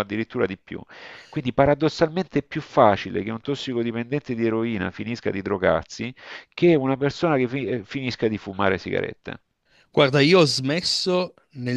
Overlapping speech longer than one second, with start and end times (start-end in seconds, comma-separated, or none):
none